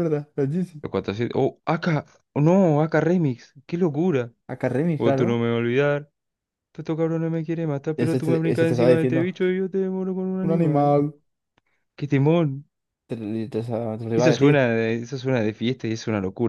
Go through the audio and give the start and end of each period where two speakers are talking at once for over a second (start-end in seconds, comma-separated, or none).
8.0-9.3